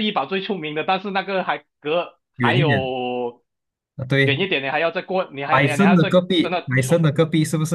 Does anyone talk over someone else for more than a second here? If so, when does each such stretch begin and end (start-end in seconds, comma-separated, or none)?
5.5-7.1